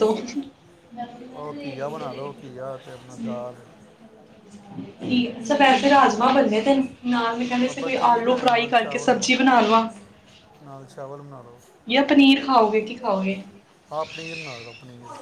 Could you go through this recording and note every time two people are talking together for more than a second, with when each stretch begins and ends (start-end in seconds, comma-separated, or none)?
7.7-9.2